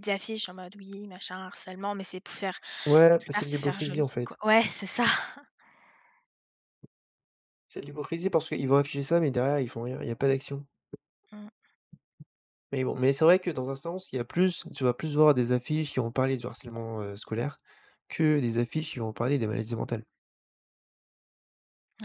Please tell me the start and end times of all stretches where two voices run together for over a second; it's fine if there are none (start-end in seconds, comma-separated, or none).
3.1-4.4